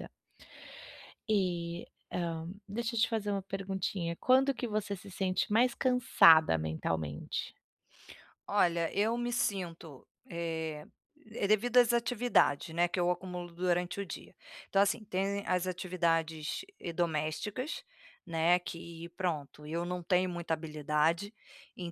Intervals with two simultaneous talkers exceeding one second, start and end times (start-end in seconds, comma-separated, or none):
none